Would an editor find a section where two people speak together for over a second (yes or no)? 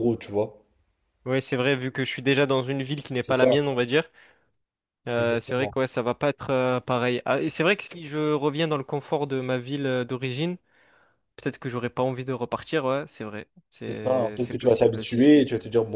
yes